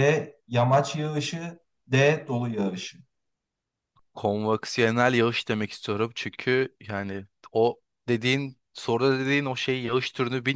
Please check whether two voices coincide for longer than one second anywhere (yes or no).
no